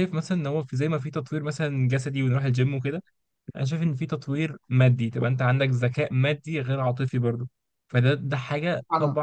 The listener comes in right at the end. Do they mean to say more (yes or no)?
no